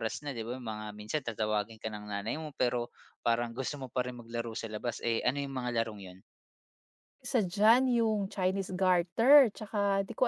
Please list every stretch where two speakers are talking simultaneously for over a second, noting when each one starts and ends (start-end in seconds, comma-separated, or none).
none